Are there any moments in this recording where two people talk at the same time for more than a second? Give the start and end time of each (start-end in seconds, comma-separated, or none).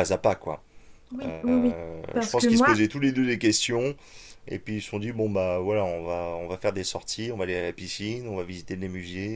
1.2-2.8